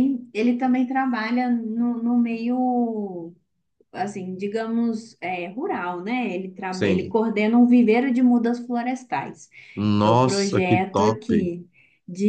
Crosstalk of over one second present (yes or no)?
yes